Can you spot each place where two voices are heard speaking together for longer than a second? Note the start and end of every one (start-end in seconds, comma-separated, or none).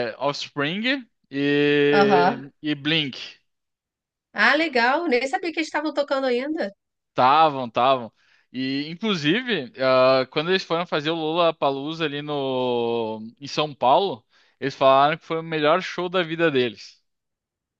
none